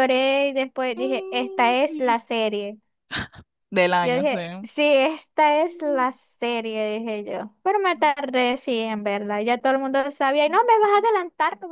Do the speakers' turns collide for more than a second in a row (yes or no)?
yes